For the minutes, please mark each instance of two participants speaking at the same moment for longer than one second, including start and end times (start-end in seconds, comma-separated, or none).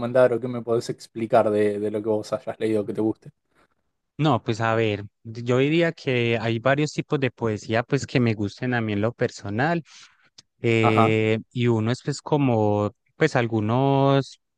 none